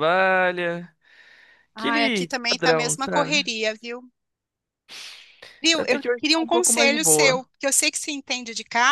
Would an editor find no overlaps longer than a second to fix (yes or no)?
no